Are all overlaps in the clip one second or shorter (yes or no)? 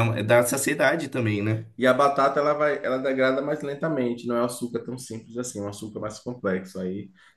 yes